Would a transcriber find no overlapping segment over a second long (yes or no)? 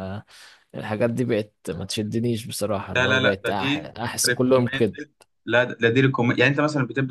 no